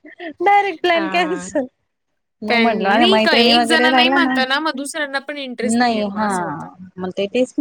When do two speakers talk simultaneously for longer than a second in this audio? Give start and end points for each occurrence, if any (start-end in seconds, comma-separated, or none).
2.5-4.4